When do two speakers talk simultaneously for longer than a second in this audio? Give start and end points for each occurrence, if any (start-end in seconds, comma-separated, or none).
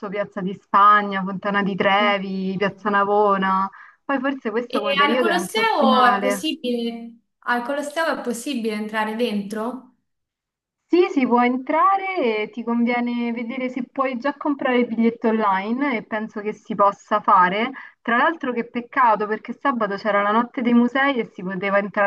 4.7-6.5